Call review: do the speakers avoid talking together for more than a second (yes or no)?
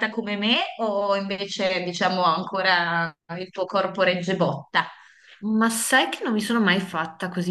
yes